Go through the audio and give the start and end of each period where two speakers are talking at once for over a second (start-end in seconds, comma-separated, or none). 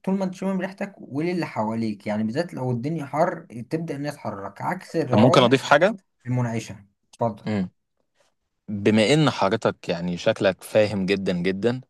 none